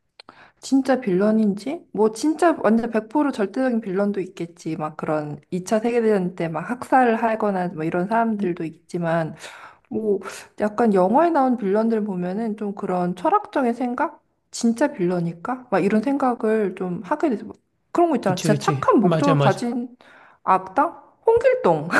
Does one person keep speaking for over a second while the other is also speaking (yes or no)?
yes